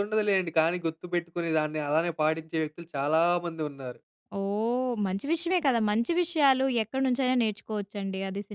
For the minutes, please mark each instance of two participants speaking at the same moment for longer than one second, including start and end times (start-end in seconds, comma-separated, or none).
none